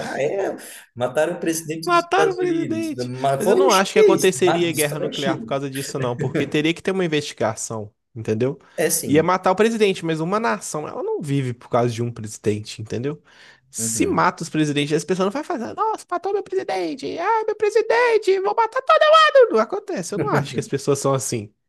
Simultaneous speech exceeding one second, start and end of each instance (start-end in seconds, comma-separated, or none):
1.8-5.5